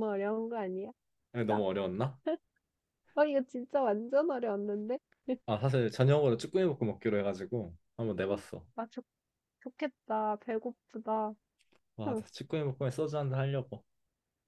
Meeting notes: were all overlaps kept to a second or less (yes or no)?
yes